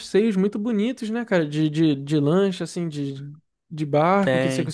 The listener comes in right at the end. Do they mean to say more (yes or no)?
no